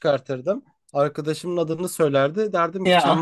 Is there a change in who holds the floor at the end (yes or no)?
no